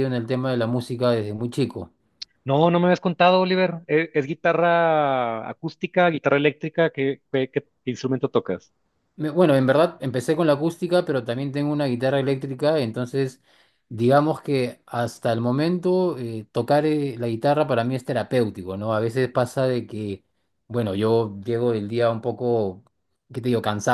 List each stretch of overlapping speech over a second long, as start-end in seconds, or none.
none